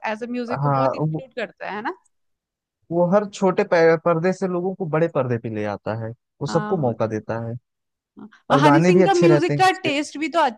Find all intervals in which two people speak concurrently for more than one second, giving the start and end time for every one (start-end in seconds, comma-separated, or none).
8.5-9.9